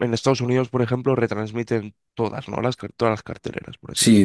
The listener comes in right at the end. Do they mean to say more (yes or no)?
yes